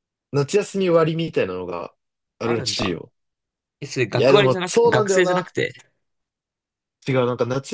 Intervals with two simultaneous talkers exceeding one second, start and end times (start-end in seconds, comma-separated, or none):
4.1-5.5